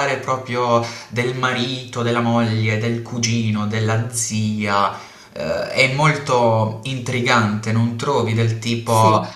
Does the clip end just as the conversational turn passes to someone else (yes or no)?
no